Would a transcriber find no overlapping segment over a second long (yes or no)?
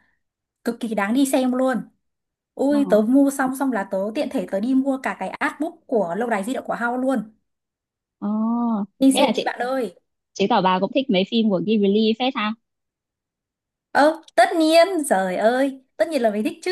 yes